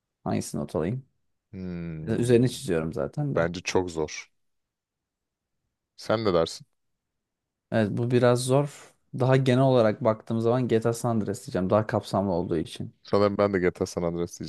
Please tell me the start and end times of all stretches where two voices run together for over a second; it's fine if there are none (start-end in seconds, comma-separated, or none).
none